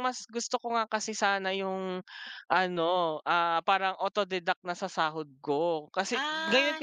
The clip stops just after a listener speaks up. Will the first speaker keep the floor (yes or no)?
yes